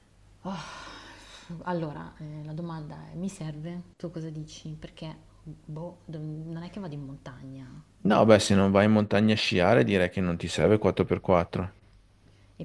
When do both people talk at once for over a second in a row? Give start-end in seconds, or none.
none